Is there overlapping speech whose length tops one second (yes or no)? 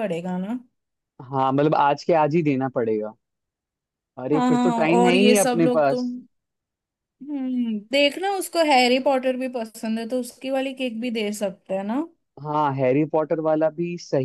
yes